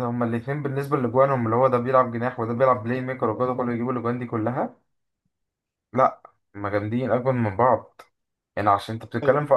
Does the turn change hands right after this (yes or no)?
no